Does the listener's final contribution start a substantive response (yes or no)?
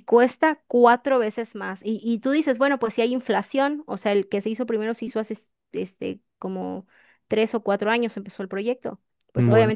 no